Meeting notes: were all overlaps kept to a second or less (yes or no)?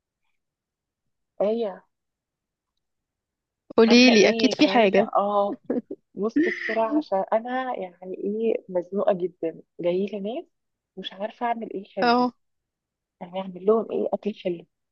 no